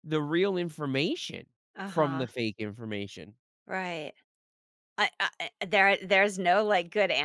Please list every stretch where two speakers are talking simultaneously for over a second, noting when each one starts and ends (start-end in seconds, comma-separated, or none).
none